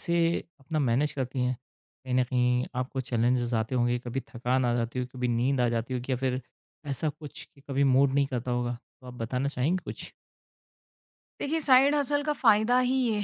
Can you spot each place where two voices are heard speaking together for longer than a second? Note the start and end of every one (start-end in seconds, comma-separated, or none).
none